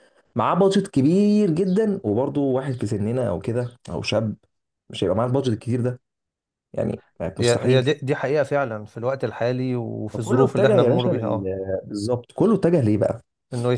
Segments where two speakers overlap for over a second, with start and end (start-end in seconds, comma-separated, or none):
10.1-11.4